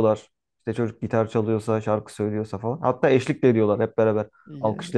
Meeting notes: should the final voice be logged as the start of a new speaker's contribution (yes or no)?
no